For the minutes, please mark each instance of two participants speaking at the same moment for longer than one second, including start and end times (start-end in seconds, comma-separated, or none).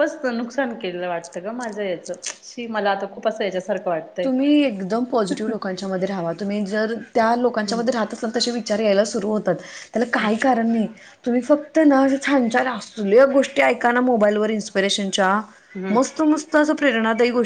none